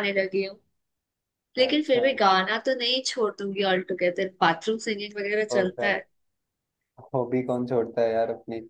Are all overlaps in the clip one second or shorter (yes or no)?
yes